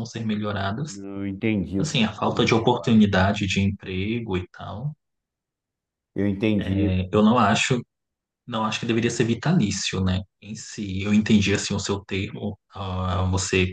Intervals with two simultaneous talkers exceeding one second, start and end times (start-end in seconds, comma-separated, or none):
1.8-3.1